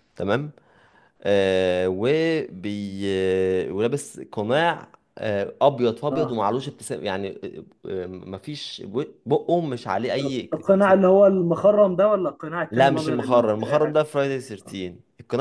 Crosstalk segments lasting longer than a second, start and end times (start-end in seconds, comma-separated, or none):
12.7-14.0